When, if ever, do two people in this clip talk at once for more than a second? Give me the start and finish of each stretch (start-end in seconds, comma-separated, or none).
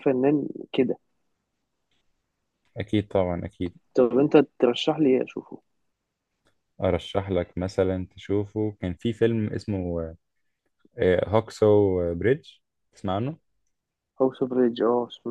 none